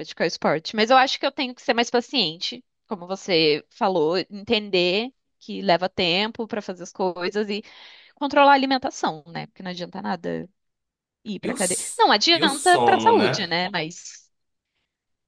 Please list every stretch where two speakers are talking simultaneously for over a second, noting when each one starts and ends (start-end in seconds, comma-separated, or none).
11.4-13.5